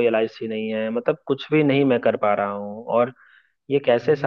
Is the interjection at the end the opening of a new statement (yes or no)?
no